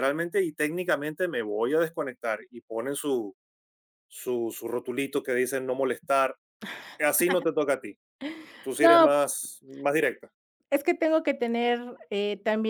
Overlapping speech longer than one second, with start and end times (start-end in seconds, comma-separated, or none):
none